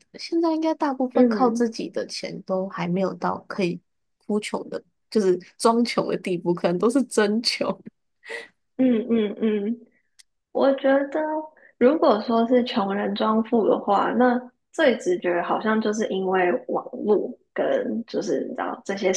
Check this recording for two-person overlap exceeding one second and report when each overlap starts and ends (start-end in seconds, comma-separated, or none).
none